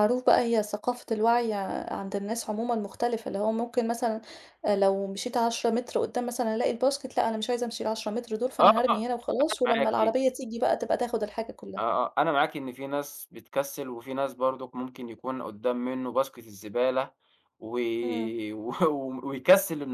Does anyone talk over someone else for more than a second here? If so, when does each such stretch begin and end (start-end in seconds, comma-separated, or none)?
none